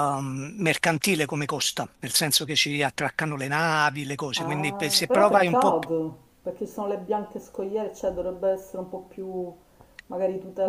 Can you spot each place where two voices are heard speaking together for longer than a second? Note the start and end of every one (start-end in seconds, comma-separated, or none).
4.4-5.9